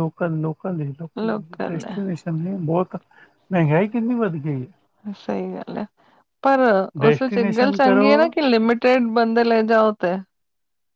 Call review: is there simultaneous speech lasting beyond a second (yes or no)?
yes